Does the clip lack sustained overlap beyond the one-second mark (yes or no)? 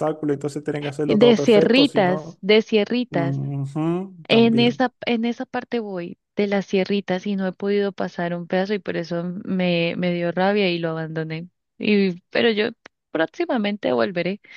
no